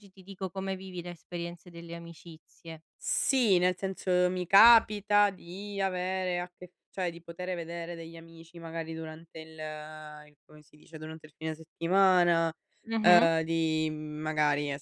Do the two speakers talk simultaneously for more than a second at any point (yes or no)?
no